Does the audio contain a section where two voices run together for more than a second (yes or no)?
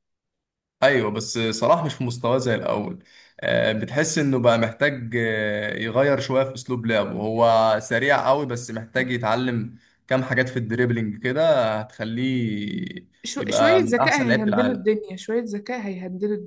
yes